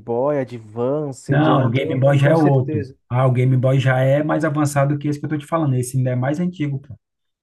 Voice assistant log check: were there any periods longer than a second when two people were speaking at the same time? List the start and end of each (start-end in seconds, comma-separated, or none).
1.3-3.0